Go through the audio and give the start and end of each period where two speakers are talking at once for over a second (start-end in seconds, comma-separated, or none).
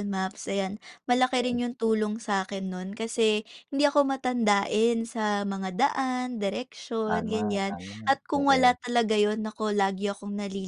7.1-8.8